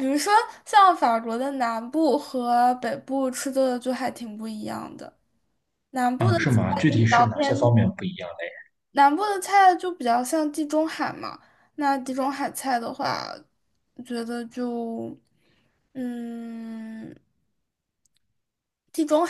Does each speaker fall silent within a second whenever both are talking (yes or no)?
no